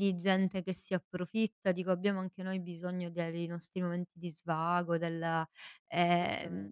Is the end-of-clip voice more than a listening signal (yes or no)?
no